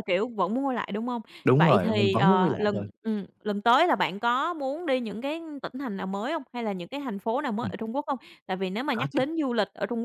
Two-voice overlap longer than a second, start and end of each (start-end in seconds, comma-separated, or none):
1.6-2.9